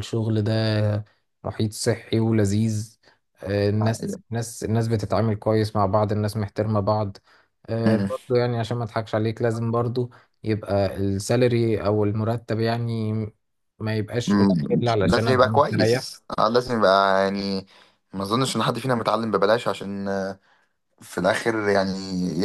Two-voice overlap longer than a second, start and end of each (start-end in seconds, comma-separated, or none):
14.3-16.1